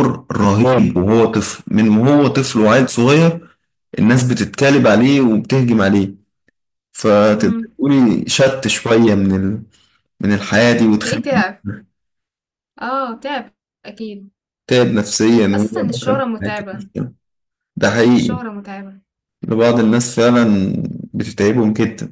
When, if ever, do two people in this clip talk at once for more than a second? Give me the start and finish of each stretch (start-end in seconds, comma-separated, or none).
15.5-16.9